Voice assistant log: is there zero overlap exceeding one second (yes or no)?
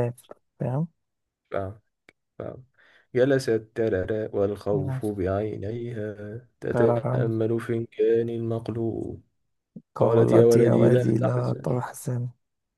no